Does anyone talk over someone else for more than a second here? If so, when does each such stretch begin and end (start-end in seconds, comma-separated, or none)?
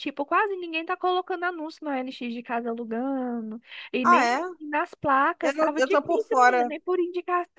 5.4-6.7